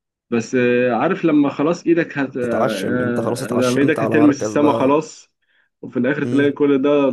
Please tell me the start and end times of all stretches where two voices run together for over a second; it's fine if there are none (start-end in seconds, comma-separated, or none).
3.5-5.0